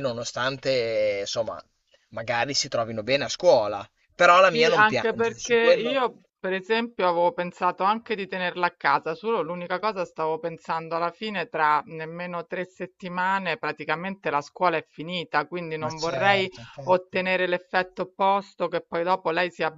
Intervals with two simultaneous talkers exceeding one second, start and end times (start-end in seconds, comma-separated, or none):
4.5-6.0, 15.8-17.2